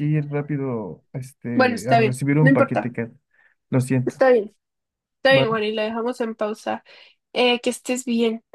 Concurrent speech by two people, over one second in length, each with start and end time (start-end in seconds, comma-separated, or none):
1.5-2.9